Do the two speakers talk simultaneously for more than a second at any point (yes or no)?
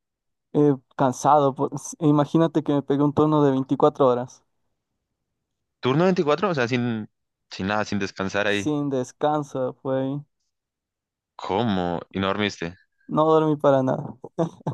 no